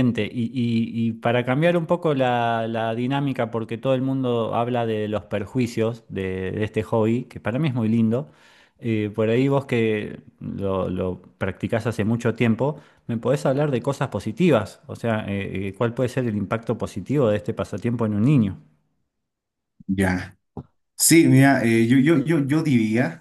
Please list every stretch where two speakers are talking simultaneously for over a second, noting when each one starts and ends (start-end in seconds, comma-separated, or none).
none